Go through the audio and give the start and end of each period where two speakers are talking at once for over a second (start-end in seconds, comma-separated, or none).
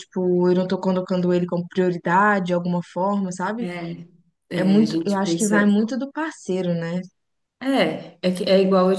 4.5-5.7